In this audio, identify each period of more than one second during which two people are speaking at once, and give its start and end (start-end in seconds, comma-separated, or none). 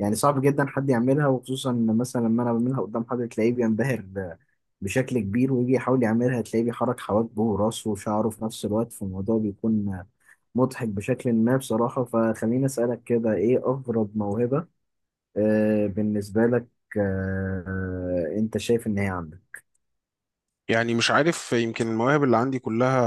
none